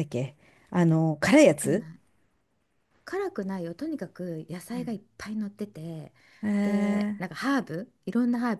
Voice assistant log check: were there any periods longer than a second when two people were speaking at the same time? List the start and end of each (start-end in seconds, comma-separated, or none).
none